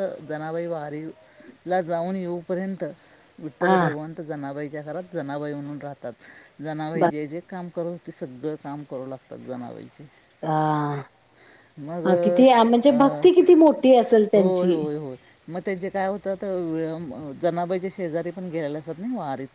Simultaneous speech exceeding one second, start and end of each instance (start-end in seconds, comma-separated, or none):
none